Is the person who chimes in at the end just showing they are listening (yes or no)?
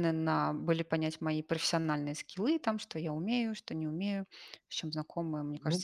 no